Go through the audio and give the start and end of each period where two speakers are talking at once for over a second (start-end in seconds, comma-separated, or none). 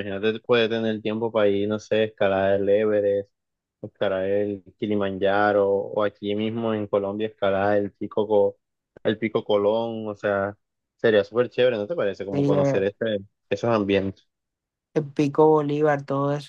none